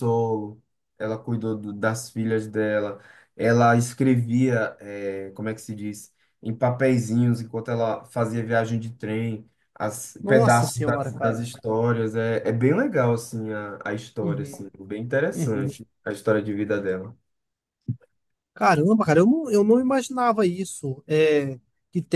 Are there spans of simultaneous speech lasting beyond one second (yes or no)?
yes